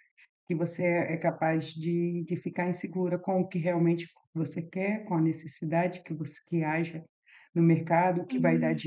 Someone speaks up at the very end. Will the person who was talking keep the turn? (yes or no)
yes